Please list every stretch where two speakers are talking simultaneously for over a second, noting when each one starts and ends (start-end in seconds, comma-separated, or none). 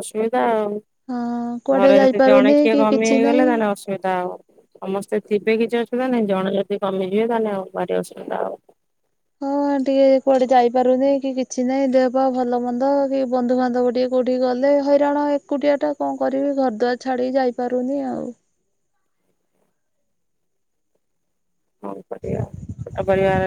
1.8-3.5